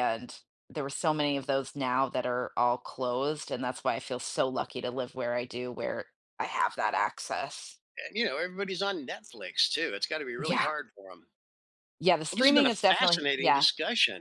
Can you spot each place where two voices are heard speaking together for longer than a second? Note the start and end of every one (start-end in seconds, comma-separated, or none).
12.3-13.7